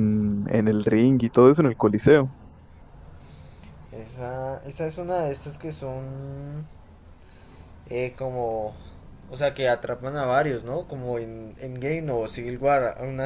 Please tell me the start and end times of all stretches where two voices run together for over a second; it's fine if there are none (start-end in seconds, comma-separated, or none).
none